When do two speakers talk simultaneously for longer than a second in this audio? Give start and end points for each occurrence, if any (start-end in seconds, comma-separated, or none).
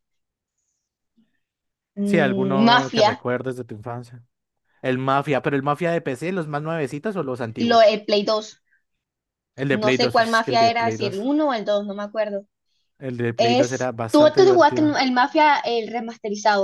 2.0-3.2, 9.7-11.3, 13.4-14.9